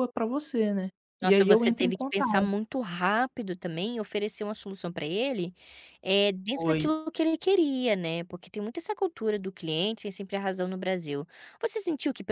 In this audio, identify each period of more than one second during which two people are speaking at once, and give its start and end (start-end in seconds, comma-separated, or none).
1.2-2.5